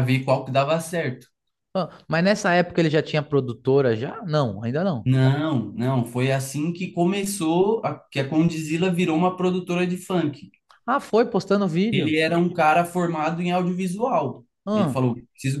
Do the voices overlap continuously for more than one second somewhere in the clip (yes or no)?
no